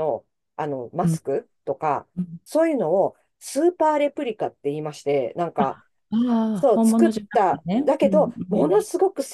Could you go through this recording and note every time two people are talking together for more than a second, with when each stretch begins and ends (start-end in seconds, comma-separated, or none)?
6.7-8.8